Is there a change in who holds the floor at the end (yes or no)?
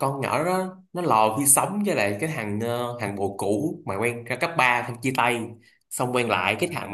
no